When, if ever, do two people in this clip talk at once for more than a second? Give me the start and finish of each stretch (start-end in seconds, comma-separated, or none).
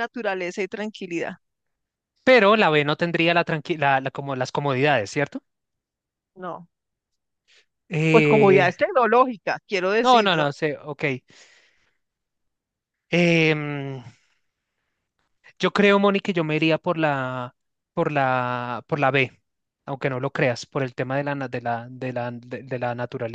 none